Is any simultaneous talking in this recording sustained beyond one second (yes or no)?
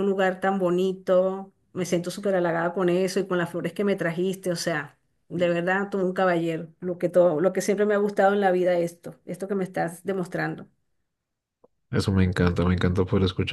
no